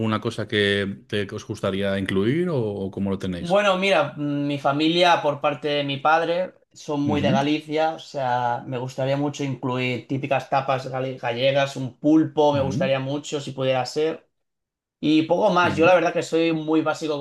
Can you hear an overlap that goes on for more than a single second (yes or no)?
no